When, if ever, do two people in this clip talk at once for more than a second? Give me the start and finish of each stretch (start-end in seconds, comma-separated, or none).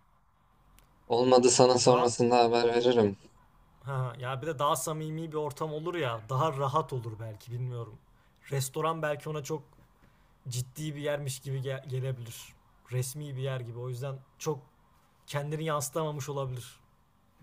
none